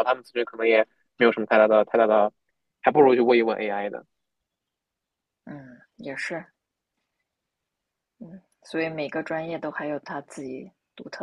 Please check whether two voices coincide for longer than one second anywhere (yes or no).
no